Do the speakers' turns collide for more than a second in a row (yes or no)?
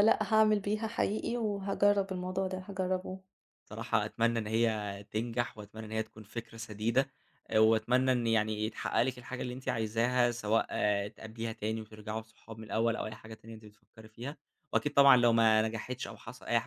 no